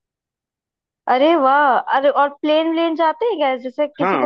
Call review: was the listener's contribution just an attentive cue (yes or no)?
no